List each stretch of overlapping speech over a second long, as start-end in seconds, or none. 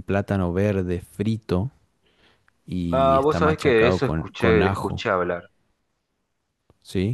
2.9-5.0